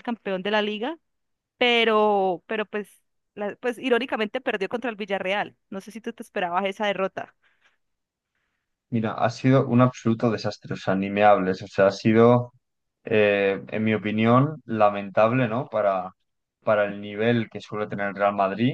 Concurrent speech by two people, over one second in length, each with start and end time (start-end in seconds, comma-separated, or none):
none